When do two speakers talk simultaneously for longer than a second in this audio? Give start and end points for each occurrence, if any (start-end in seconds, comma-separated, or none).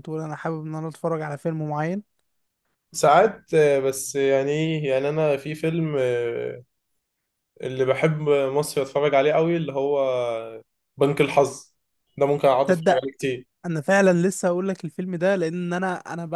none